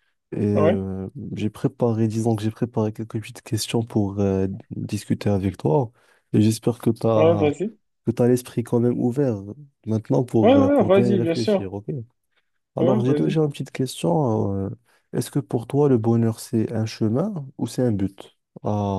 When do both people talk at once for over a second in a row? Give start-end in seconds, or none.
10.4-11.7